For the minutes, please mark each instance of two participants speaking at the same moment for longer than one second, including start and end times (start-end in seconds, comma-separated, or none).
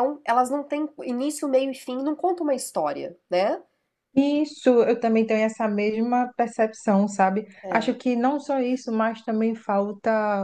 none